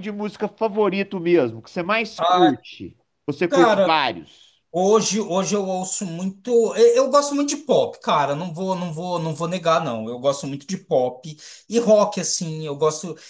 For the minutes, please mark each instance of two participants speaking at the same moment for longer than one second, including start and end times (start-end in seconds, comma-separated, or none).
none